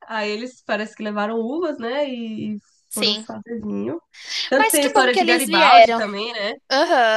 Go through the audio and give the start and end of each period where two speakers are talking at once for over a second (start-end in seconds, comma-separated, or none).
4.6-6.0